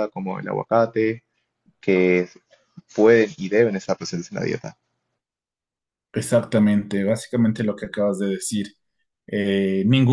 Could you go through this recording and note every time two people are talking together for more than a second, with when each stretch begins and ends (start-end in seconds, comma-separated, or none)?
none